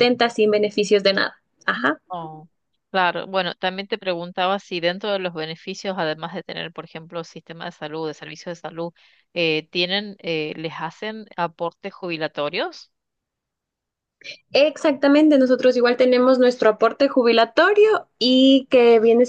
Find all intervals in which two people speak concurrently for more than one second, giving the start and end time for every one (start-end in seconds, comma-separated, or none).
none